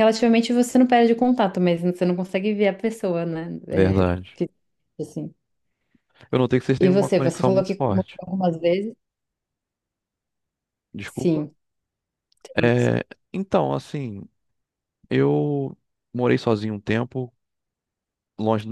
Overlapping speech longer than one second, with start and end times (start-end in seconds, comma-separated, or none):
6.8-8.2